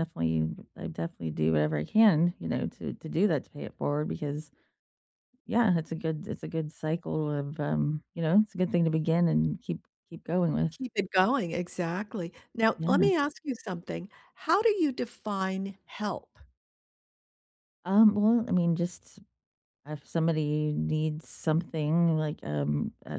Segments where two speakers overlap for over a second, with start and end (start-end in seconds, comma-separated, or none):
none